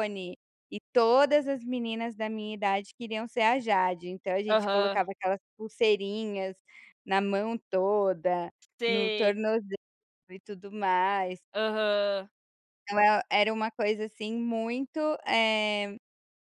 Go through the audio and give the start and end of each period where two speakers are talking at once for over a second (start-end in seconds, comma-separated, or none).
none